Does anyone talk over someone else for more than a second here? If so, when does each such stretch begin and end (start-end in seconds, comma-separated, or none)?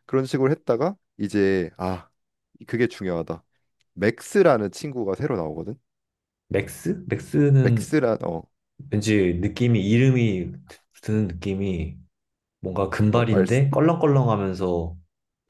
none